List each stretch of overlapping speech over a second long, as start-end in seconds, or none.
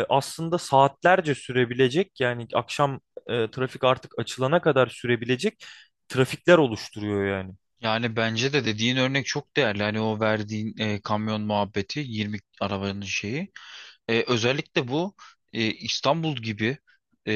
none